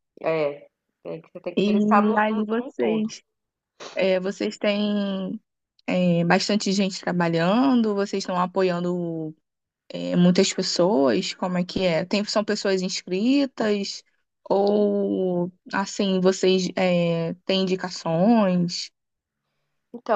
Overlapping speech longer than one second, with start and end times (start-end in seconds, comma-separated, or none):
1.6-3.1